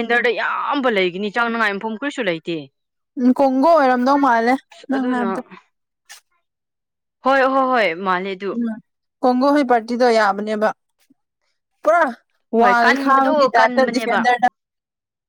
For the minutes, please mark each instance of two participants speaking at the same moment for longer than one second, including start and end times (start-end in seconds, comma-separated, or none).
12.6-14.3